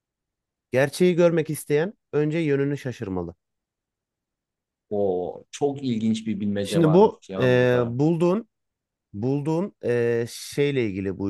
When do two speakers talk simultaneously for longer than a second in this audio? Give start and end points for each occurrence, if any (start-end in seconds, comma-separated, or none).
6.6-8.0